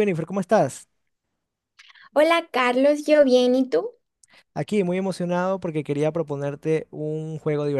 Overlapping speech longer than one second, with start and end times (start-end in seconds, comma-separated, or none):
none